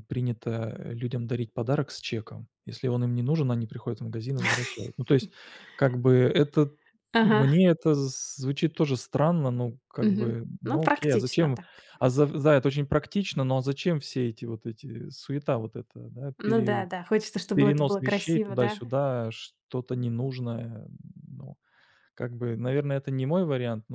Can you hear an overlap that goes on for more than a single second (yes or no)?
yes